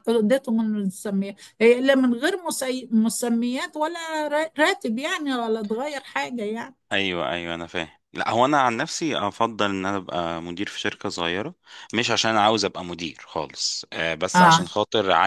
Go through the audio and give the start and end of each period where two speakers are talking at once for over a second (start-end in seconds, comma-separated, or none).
none